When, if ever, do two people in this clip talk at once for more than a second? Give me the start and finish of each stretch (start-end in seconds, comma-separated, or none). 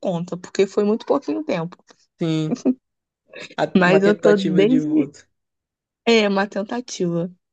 3.8-5.1